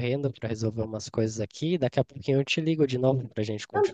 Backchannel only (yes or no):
no